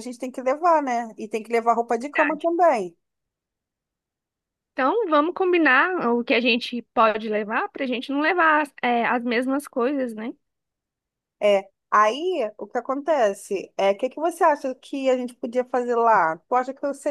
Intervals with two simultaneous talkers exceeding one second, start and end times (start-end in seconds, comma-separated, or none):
none